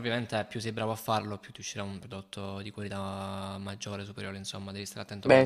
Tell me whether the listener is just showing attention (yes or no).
no